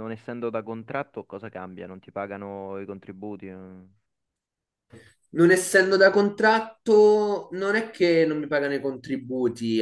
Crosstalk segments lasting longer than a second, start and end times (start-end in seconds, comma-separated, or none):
none